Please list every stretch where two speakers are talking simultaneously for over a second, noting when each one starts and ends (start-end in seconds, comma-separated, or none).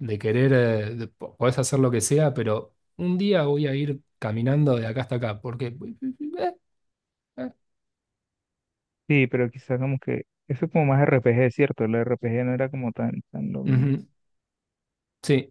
none